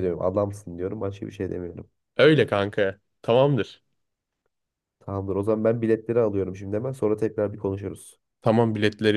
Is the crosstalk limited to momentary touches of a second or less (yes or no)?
yes